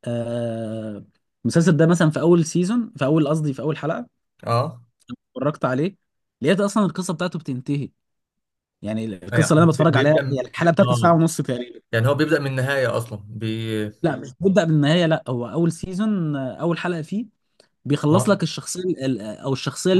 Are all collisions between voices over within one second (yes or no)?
no